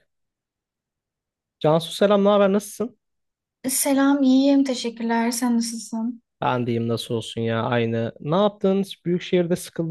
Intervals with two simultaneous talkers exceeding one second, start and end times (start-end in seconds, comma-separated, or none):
none